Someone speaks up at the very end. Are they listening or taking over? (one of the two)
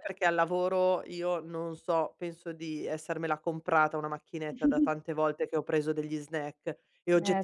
listening